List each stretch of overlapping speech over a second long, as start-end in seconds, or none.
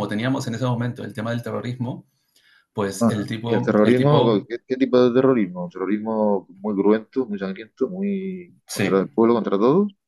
3.0-4.4